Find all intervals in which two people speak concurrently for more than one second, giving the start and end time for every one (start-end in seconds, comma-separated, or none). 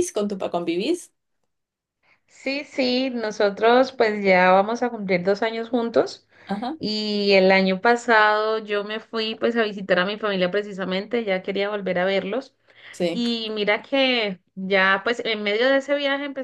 none